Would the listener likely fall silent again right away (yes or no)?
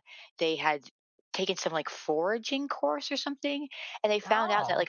yes